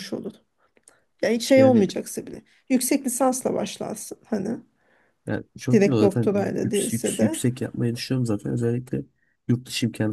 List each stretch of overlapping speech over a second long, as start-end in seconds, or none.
5.7-7.4